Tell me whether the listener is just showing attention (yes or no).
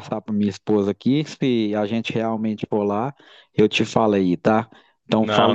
no